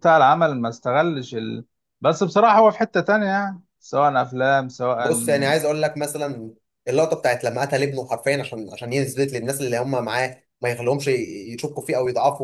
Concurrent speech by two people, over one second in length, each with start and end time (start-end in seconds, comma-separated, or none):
none